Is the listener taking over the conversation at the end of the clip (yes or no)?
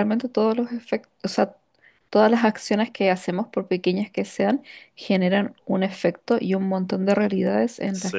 no